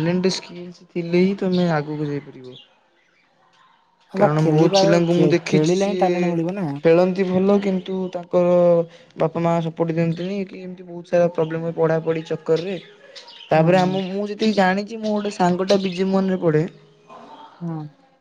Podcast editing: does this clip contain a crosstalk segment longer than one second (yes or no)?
yes